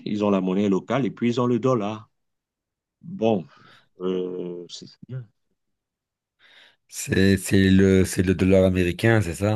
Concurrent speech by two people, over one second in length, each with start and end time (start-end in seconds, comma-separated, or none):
none